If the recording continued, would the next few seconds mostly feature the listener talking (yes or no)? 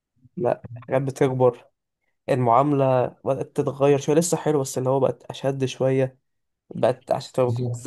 no